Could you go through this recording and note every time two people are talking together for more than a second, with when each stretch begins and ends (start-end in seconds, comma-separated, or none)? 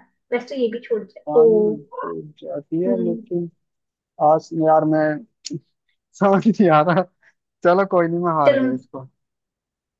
none